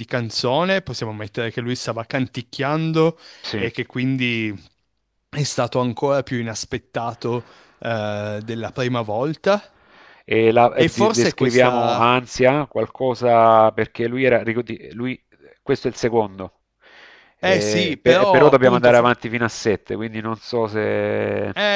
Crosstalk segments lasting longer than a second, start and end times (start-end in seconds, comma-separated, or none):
10.8-12.2, 17.4-19.1